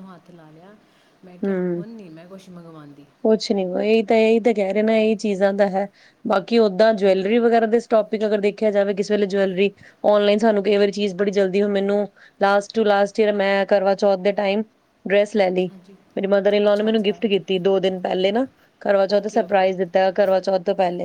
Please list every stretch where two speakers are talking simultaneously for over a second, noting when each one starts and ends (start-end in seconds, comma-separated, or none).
none